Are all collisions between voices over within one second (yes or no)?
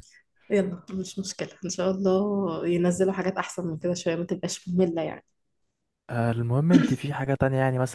yes